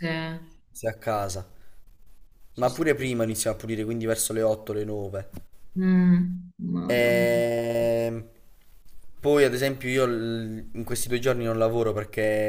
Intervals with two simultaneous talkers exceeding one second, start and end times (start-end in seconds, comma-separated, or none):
none